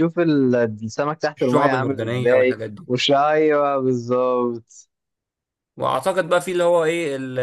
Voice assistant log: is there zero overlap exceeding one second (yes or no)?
no